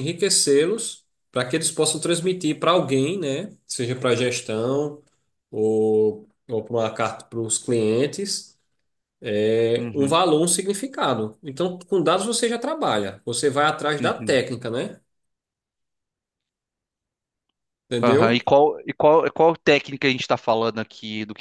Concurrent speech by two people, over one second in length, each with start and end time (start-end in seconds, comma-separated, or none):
none